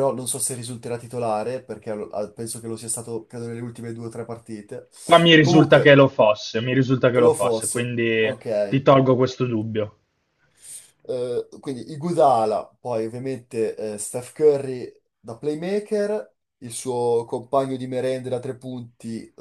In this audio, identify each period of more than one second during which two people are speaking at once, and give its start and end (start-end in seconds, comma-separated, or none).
7.2-8.8